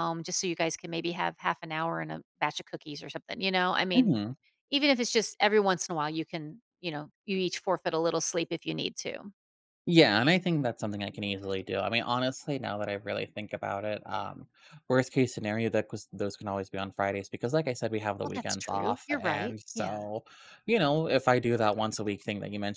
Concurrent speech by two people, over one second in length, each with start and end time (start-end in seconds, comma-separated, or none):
18.2-20.0